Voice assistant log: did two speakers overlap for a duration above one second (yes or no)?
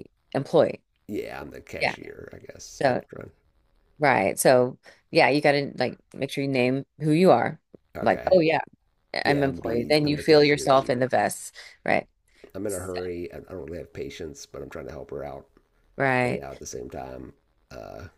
yes